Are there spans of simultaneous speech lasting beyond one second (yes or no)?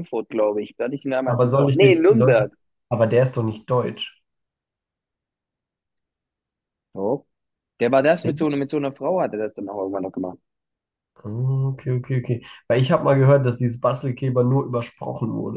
yes